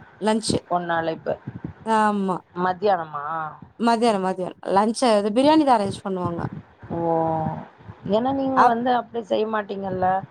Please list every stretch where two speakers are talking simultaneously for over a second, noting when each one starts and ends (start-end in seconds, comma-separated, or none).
none